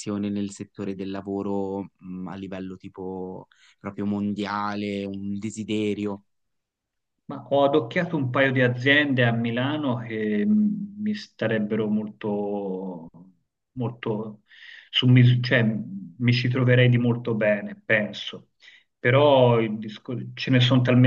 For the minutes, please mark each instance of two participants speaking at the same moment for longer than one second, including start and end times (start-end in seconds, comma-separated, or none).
none